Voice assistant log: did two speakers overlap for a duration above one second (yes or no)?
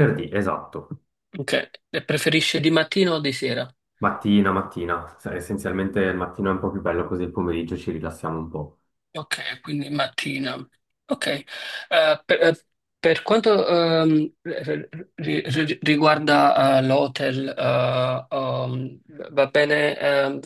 no